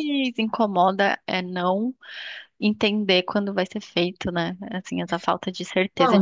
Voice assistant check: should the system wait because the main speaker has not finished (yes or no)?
no